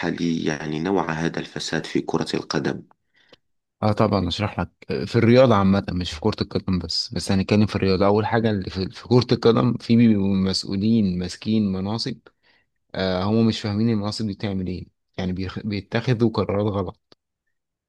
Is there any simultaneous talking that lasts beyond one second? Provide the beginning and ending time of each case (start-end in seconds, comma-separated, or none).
none